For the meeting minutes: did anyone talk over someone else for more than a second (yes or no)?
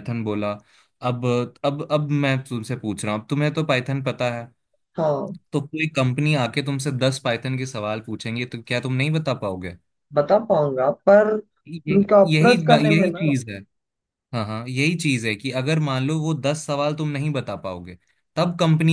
yes